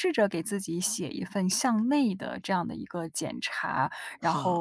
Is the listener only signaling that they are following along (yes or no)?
yes